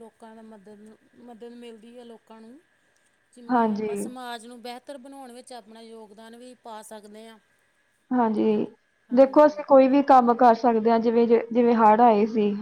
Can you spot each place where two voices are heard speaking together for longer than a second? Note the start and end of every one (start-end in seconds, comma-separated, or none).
none